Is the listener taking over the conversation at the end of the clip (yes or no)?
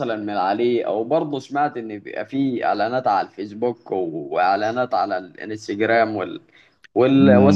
yes